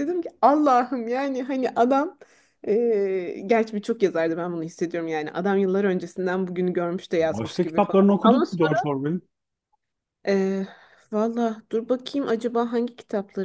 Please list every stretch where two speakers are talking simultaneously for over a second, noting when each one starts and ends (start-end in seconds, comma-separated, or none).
7.2-8.4